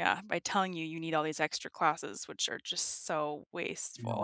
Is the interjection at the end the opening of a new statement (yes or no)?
yes